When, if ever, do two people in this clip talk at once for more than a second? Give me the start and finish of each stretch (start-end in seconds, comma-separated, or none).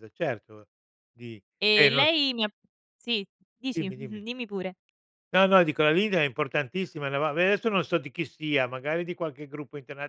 none